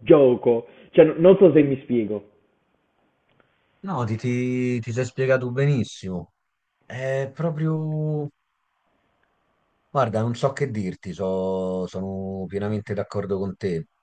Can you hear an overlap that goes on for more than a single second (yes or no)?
no